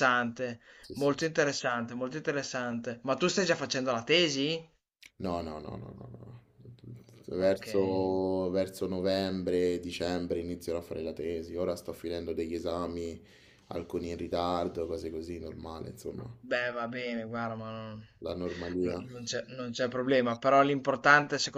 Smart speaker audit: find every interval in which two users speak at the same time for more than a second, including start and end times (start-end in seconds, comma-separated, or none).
none